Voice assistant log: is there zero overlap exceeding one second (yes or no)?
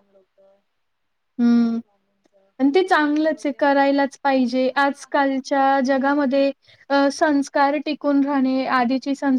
no